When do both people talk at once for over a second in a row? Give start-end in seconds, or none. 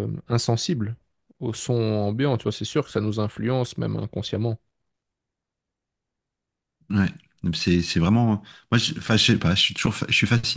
none